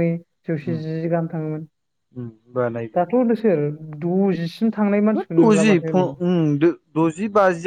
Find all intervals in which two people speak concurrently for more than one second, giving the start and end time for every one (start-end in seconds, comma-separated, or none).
none